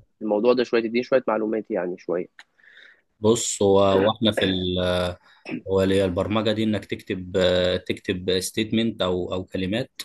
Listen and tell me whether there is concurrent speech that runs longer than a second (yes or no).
no